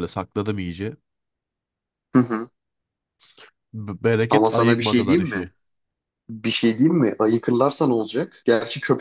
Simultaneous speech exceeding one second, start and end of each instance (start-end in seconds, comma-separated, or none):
4.3-5.5